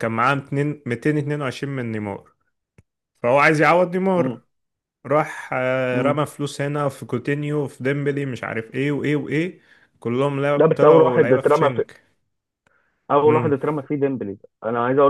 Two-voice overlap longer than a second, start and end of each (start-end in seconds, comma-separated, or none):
10.6-11.8